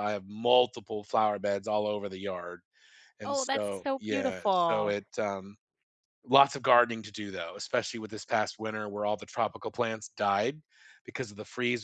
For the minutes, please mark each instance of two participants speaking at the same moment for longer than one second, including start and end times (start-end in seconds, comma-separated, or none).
3.2-5.0